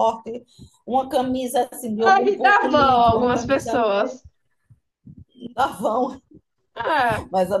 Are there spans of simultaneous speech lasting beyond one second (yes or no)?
yes